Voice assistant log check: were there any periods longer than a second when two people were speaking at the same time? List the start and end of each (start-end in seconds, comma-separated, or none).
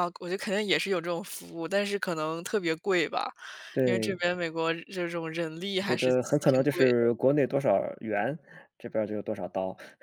5.8-7.1